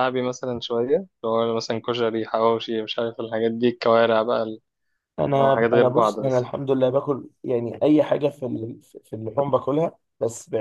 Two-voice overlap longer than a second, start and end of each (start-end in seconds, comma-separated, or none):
5.2-6.5